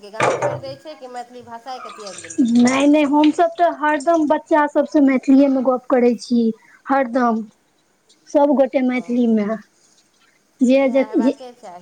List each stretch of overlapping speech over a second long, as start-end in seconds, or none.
none